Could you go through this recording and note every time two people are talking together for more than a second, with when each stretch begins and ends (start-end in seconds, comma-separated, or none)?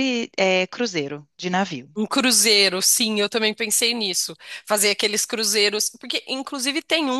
none